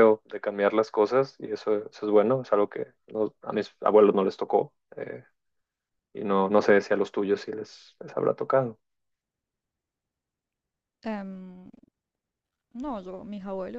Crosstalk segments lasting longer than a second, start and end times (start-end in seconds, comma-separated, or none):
none